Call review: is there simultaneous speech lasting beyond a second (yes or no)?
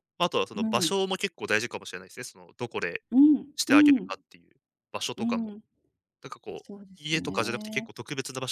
yes